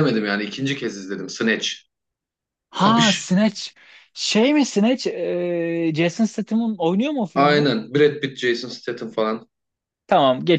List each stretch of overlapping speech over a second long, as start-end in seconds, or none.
none